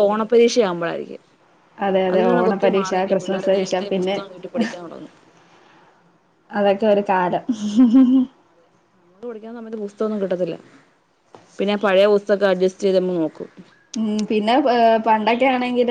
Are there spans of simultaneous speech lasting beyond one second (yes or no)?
yes